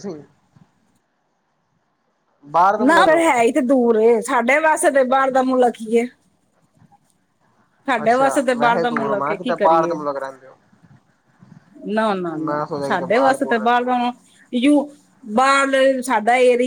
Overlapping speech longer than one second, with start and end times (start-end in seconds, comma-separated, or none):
8.0-10.0, 12.5-13.9